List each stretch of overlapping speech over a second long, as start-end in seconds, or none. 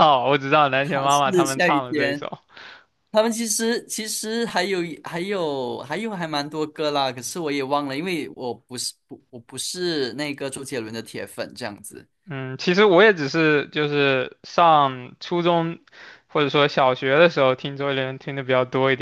0.8-2.3